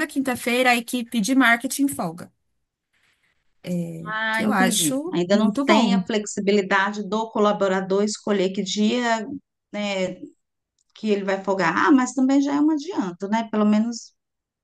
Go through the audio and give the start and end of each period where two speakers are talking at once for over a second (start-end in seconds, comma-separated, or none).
4.3-6.0